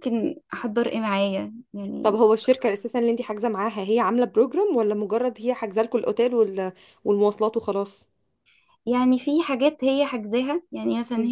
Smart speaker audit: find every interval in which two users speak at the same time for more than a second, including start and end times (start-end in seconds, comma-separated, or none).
none